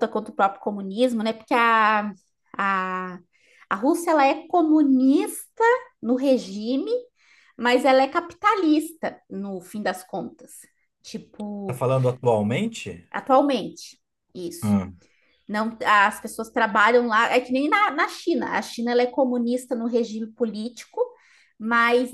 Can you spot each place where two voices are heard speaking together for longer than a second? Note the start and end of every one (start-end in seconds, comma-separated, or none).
none